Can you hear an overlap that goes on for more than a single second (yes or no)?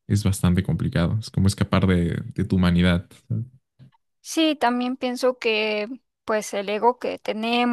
no